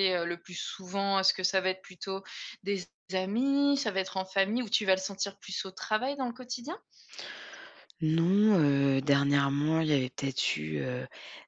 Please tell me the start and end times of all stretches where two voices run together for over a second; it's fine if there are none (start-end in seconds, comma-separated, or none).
none